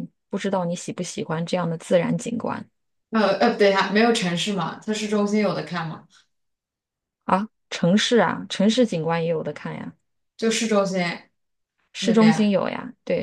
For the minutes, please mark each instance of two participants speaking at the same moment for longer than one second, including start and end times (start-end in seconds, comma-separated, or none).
none